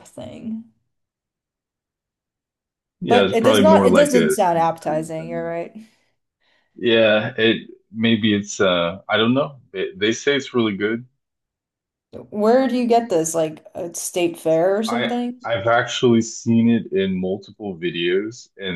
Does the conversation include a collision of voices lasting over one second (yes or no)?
yes